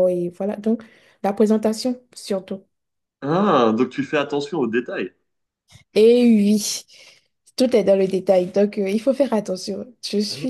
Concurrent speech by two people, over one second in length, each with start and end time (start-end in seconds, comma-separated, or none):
none